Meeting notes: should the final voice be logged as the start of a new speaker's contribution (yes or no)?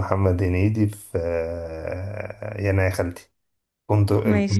yes